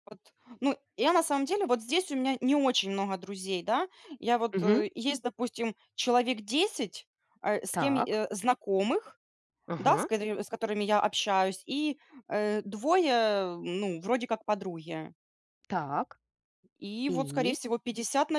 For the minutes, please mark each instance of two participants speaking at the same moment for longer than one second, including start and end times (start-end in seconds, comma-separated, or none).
none